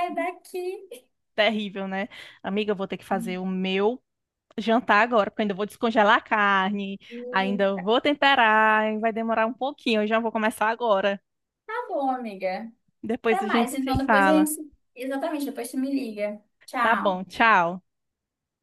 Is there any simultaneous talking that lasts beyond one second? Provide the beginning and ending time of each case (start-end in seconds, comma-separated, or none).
13.2-14.5